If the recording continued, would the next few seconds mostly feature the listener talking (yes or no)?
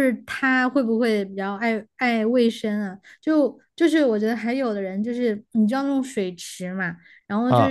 no